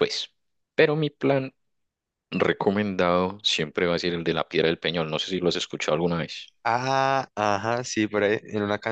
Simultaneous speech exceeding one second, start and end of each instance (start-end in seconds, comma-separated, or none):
none